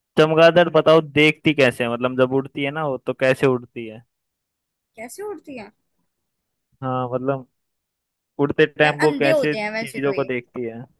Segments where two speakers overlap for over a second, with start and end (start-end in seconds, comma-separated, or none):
8.8-10.2